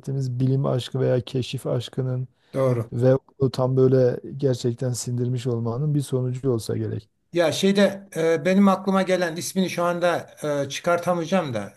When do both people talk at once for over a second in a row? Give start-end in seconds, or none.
none